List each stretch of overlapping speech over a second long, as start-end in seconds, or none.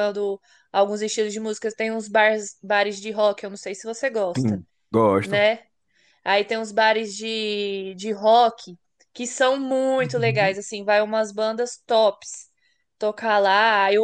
none